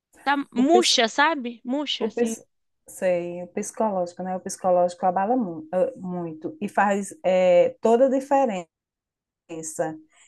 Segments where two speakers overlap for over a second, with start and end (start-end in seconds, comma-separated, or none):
none